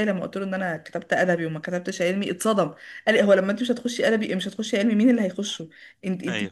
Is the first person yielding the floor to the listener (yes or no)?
no